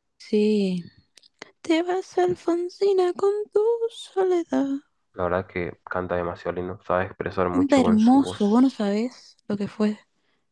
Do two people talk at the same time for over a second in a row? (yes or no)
yes